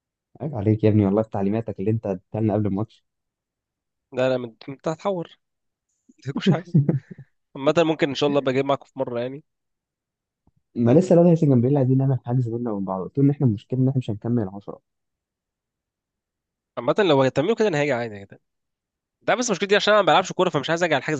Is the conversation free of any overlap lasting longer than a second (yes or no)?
yes